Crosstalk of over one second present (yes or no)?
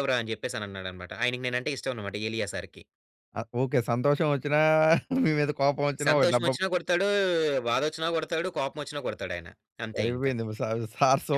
no